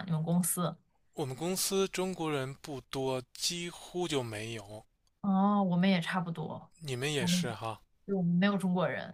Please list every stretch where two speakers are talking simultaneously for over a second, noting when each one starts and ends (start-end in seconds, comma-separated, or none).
none